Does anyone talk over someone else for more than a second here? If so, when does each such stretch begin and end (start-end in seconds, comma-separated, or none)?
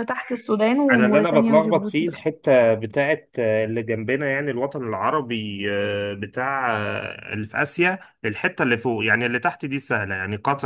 0.8-2.2